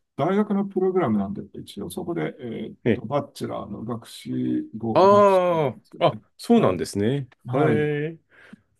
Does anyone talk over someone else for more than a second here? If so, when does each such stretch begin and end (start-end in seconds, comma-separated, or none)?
4.9-6.8